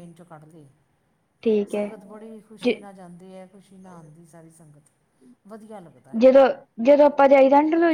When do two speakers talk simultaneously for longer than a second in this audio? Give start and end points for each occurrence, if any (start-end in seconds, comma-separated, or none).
none